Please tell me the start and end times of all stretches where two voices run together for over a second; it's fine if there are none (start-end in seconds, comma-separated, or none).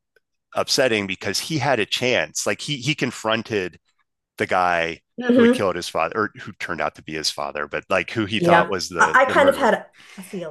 8.4-9.7